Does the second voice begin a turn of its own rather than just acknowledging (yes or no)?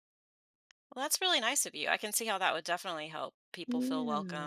yes